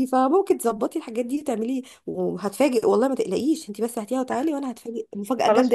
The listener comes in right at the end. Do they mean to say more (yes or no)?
yes